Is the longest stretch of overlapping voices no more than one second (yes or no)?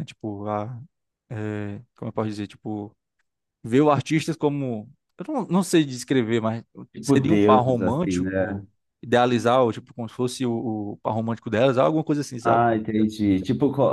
no